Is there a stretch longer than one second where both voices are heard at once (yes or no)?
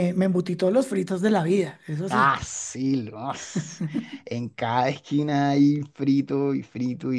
no